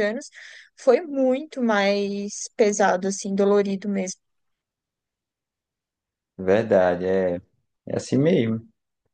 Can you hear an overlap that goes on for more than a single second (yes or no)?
no